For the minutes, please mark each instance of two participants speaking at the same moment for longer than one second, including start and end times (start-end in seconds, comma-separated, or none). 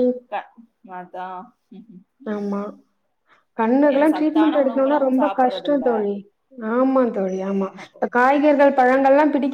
4.2-5.8